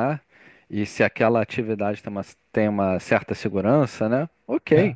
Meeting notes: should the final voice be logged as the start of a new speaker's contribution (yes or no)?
no